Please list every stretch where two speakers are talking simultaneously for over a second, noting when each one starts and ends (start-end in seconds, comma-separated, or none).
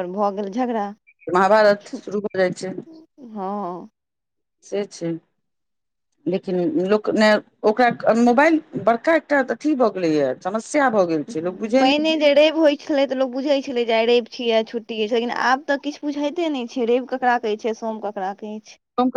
none